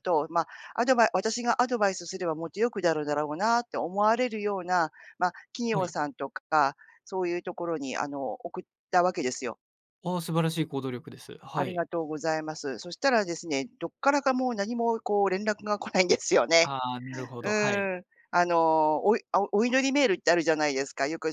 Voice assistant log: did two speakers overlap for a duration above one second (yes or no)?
no